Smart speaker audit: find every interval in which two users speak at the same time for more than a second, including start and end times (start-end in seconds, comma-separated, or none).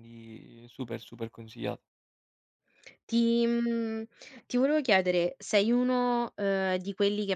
none